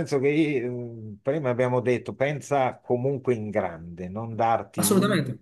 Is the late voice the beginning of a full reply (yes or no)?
no